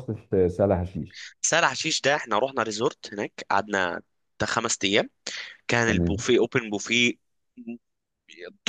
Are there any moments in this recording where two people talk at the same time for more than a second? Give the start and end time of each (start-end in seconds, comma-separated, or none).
none